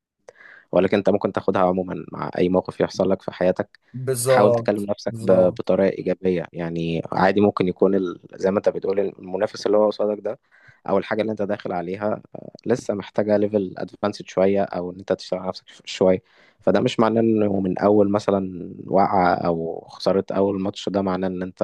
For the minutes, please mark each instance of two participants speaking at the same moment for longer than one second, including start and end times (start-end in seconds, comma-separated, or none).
4.3-5.6